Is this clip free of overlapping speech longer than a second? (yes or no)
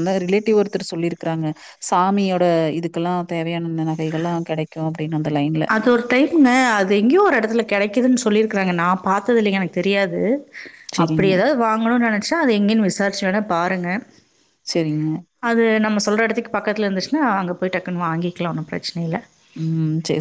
yes